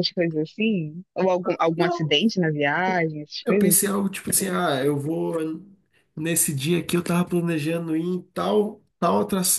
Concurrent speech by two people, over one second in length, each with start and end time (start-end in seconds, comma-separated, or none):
none